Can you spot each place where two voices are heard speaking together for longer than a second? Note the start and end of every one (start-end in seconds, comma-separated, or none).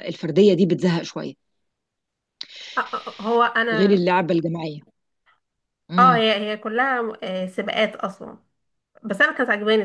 none